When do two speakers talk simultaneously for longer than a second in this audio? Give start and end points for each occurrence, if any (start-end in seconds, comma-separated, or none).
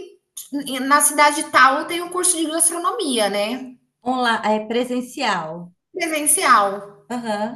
none